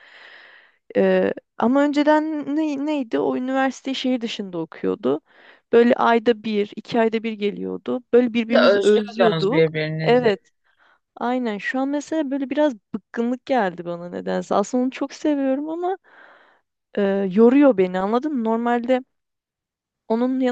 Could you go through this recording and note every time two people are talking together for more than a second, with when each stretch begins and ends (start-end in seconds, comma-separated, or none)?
8.5-10.3